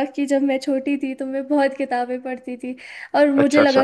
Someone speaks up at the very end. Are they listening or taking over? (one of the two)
listening